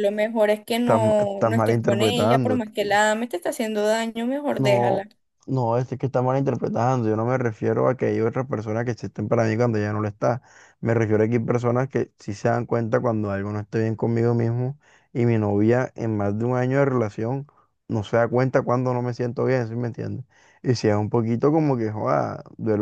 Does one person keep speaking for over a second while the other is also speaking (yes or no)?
yes